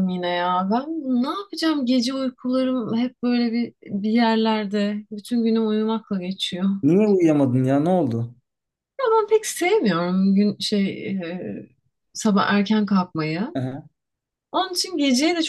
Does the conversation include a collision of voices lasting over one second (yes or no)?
no